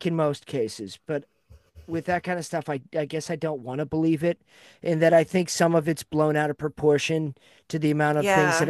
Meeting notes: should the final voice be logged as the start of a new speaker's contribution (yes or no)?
no